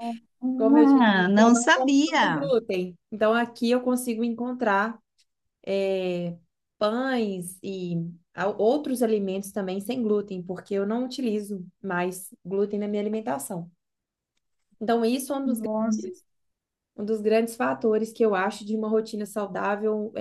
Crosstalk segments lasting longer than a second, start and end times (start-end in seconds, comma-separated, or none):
0.6-2.5